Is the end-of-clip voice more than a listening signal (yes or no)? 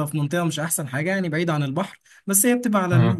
no